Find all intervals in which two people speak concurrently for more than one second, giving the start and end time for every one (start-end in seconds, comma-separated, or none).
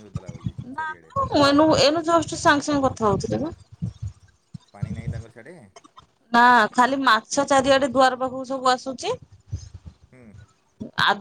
none